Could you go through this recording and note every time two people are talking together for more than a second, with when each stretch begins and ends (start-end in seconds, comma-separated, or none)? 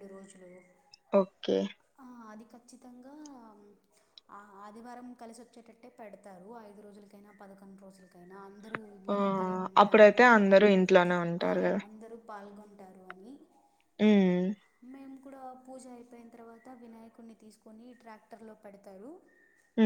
none